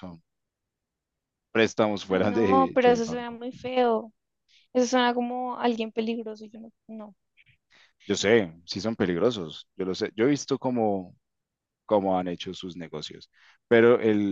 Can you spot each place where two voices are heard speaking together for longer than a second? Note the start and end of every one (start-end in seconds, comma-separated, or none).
2.1-3.4